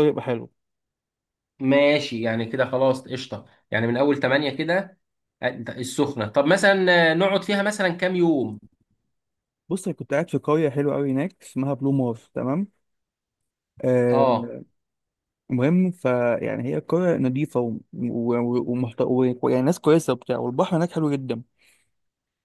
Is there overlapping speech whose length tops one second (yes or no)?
no